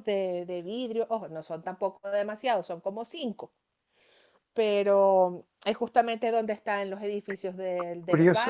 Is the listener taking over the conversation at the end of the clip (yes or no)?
yes